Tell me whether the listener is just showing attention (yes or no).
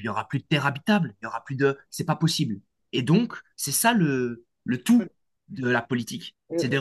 yes